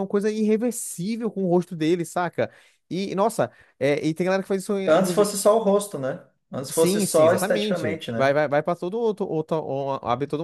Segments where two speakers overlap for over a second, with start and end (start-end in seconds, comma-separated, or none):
6.7-8.4